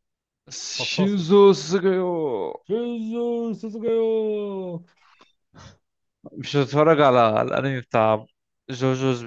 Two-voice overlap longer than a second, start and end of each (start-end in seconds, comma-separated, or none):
none